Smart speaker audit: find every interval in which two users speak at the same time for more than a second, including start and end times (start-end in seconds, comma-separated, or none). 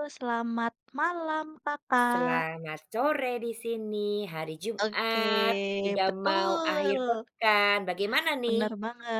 4.8-7.2